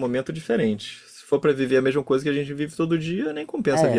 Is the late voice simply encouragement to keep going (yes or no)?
no